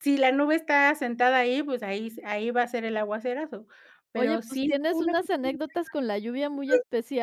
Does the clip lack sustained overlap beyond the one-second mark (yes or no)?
no